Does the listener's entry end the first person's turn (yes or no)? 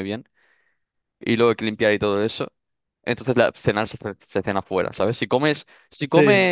no